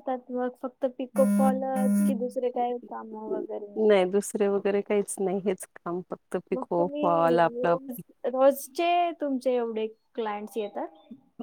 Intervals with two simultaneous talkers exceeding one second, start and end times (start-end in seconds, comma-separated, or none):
6.5-7.8